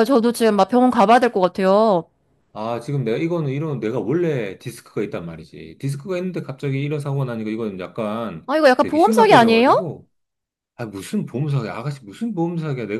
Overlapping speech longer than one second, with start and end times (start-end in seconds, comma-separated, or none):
8.5-9.9